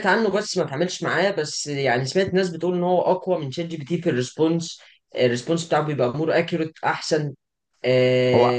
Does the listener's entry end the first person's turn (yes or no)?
no